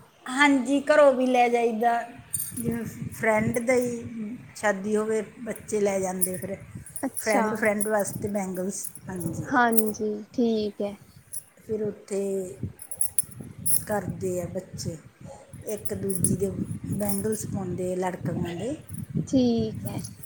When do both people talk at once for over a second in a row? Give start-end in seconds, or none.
none